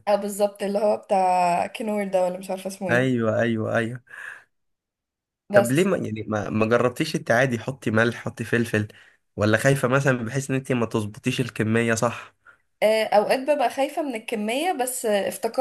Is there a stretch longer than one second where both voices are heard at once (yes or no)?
no